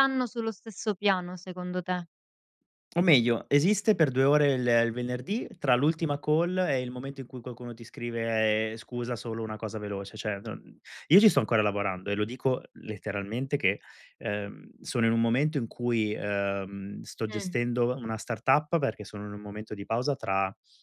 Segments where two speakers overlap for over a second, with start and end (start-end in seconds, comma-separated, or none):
none